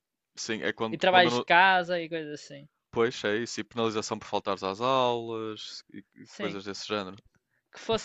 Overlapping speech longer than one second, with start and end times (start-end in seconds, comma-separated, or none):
none